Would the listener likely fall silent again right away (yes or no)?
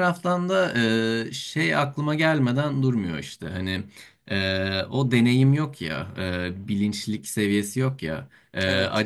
yes